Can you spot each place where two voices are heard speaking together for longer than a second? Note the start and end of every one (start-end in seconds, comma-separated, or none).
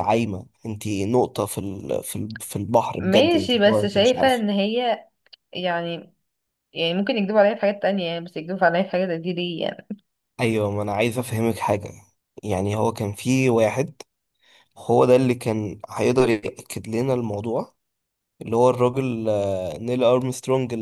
3.0-4.4